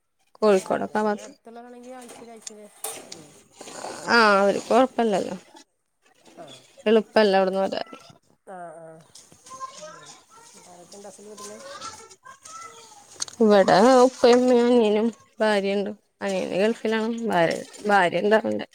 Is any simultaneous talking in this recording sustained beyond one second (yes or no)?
no